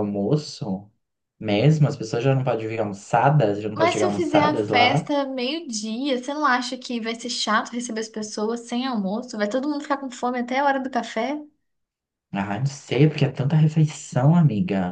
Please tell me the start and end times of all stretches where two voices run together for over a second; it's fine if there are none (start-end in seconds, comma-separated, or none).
3.8-5.1